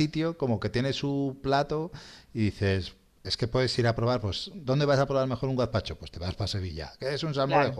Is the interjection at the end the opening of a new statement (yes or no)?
no